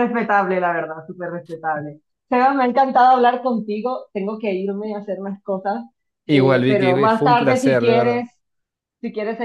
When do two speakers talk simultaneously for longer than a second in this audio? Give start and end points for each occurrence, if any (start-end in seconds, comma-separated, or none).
6.3-8.3